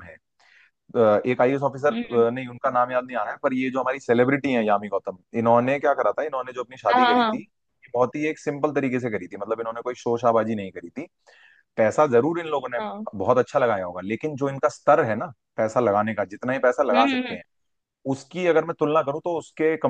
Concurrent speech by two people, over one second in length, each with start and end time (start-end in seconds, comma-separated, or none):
none